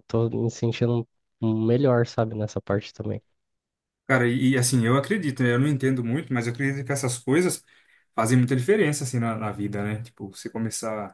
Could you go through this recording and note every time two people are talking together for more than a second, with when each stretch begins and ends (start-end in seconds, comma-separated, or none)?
none